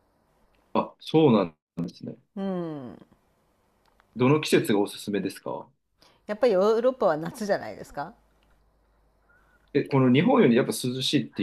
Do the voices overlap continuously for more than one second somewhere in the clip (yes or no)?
no